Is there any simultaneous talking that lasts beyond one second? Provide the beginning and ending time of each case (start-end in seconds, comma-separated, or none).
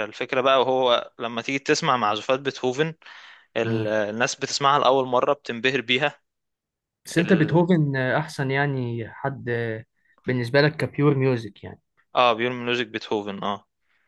none